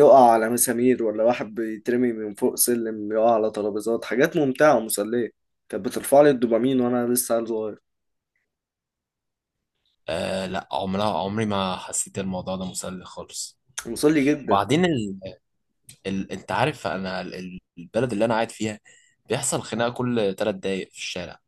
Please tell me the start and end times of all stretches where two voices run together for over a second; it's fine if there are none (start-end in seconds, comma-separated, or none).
none